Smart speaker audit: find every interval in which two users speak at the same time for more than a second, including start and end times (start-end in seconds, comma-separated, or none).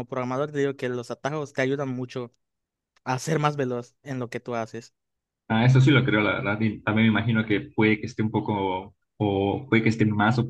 none